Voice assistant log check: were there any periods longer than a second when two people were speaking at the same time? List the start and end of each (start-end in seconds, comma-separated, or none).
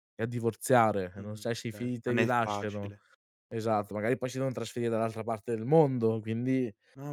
1.2-2.9